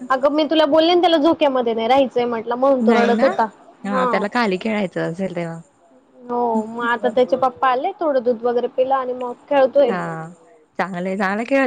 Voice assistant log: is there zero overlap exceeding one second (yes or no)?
yes